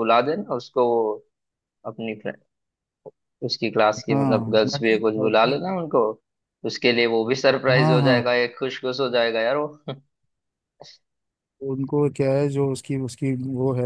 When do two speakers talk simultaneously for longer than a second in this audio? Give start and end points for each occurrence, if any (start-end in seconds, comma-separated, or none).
4.1-5.6